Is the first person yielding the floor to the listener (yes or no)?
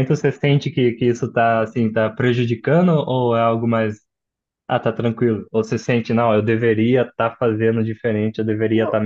no